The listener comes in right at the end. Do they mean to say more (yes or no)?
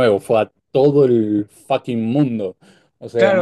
yes